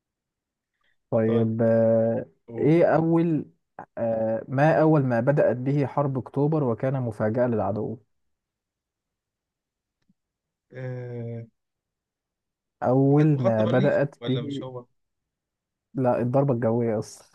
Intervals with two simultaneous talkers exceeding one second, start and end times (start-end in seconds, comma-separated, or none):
13.1-14.6